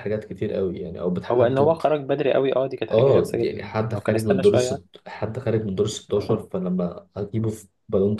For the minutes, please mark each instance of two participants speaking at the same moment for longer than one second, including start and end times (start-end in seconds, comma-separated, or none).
2.9-4.8